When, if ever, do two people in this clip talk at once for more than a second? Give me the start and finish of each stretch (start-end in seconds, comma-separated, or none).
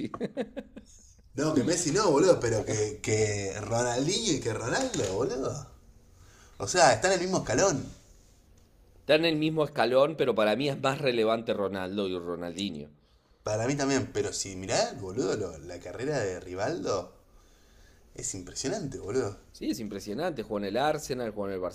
none